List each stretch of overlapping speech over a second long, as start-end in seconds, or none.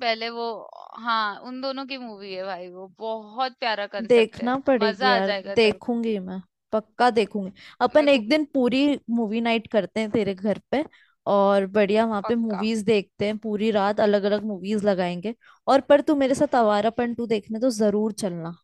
4.1-6.0